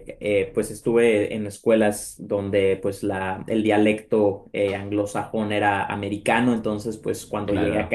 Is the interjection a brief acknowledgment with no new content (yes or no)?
yes